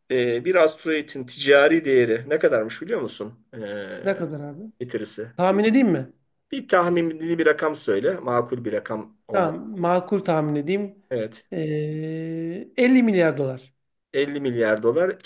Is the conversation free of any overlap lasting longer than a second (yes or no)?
yes